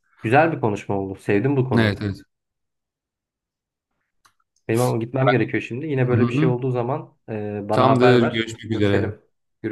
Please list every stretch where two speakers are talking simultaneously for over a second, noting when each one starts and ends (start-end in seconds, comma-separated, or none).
7.7-9.1